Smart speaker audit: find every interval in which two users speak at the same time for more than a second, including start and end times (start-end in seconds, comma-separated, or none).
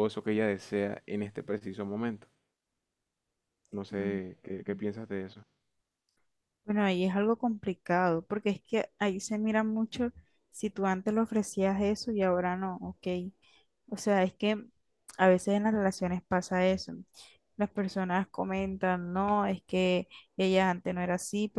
none